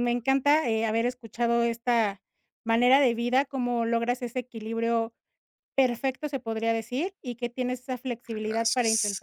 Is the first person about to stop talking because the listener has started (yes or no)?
no